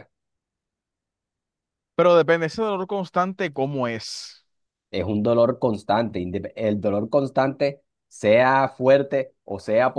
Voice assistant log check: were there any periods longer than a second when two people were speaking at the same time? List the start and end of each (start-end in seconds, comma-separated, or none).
none